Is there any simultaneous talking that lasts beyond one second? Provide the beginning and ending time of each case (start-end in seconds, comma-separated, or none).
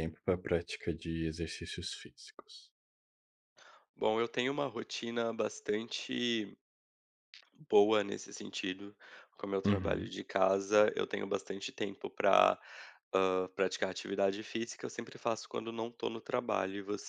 none